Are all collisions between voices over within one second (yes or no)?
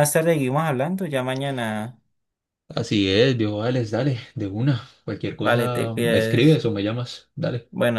no